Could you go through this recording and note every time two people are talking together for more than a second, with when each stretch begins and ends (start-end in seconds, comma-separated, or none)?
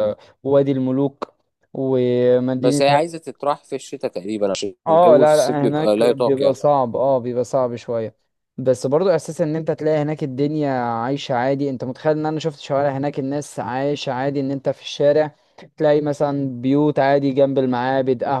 4.9-6.6